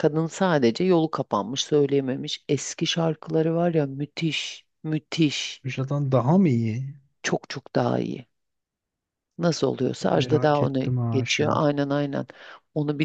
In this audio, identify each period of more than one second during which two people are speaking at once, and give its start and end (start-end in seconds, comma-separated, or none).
10.1-11.7